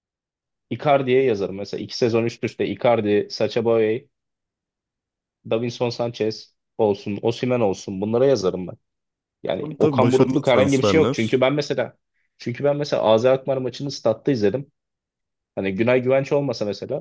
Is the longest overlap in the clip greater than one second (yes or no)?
yes